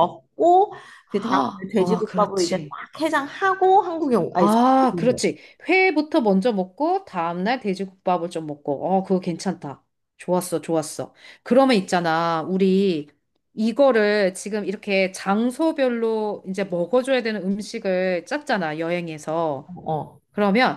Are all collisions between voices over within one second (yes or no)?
no